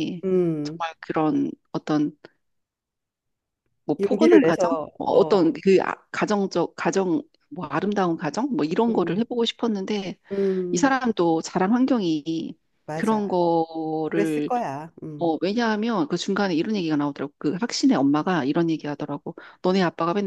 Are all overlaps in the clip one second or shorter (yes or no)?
no